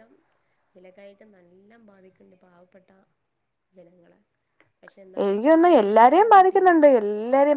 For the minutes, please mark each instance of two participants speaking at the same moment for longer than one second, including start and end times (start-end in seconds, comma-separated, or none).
5.2-6.8